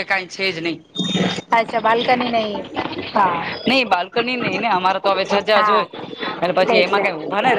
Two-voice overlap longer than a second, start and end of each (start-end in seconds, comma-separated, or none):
none